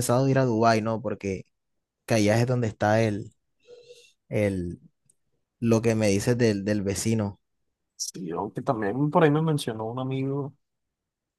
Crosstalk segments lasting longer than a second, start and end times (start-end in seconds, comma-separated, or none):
none